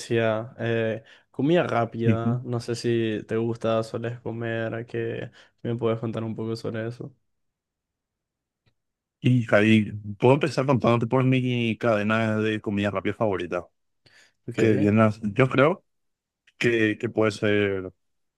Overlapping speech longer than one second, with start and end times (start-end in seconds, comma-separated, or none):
none